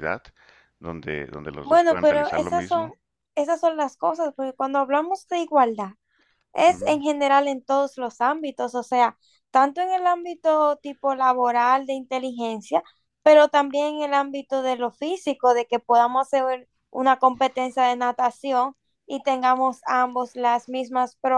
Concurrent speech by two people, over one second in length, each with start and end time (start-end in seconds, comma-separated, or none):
1.6-2.9